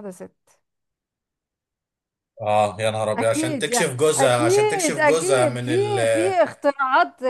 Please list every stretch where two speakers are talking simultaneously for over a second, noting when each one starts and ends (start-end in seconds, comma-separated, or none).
3.2-5.7